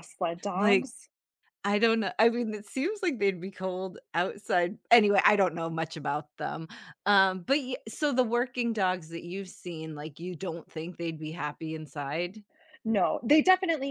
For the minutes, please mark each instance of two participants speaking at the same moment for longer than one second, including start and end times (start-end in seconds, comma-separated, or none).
none